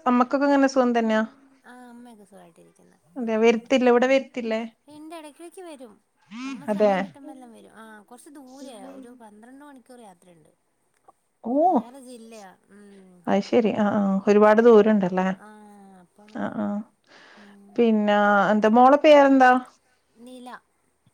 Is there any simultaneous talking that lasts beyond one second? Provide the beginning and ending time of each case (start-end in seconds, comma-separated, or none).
none